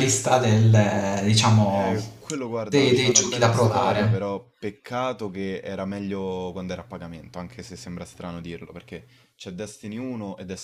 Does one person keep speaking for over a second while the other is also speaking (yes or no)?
yes